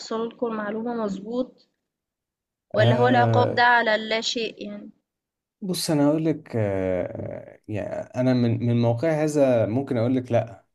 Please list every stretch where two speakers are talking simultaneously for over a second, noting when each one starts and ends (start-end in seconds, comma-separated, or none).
none